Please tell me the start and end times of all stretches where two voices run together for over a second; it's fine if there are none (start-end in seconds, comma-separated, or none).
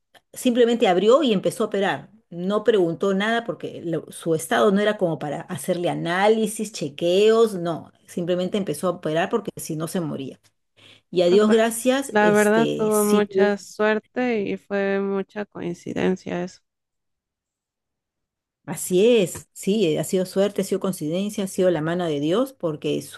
11.3-13.5